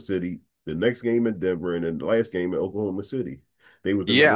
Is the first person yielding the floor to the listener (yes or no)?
yes